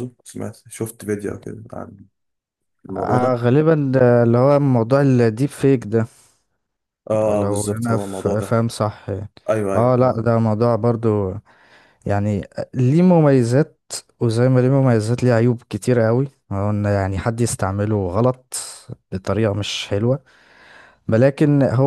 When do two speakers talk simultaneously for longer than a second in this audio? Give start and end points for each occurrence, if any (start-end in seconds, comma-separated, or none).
7.3-8.6